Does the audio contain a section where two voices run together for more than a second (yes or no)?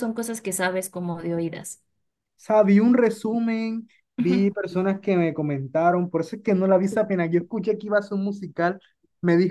no